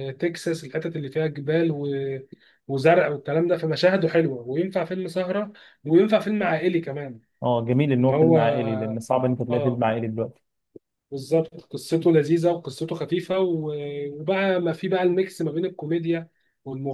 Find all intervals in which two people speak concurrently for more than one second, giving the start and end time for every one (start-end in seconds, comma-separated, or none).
none